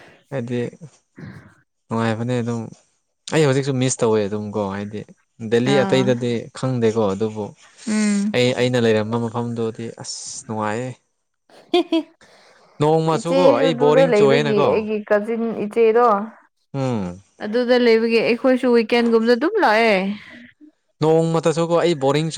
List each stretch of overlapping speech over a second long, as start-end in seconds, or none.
13.2-14.7